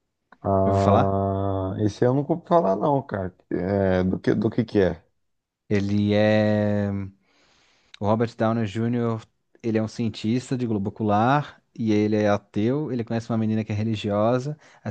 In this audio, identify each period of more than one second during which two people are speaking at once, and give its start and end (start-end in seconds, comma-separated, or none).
none